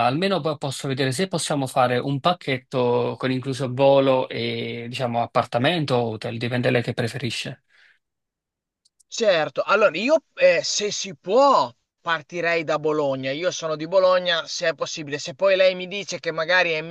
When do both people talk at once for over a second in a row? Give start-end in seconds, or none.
none